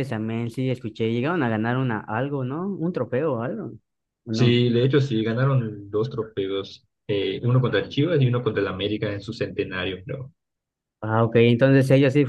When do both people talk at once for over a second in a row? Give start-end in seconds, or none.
none